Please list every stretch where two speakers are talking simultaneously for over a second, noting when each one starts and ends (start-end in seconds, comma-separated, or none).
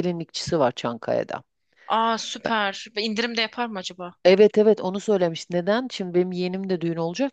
none